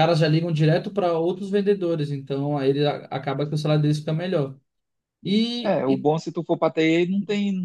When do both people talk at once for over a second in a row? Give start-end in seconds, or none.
none